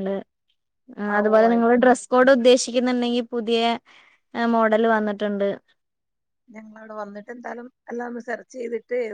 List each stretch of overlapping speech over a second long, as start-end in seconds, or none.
none